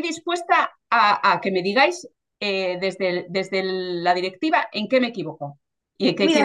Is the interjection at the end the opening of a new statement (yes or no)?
yes